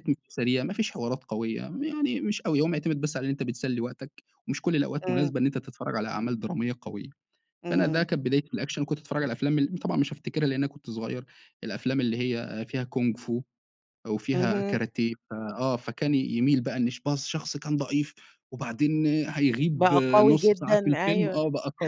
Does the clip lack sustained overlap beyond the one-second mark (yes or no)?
no